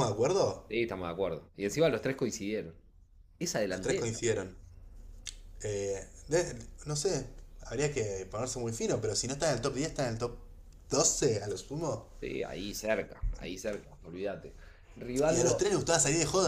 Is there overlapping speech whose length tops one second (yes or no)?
no